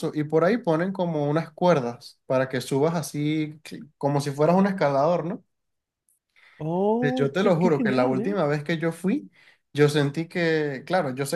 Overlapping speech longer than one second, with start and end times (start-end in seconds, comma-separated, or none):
7.0-8.4